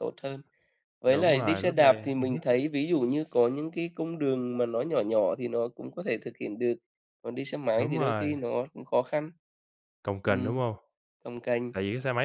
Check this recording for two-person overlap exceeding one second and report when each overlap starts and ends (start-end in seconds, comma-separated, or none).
1.1-2.4